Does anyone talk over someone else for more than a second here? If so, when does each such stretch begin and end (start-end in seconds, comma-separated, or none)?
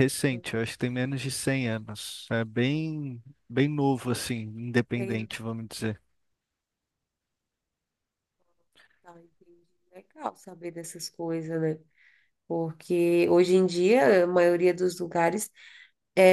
none